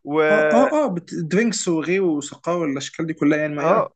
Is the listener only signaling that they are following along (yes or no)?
no